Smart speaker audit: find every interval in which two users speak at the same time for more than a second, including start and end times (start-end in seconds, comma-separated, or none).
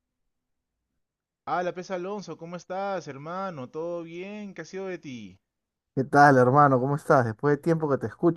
none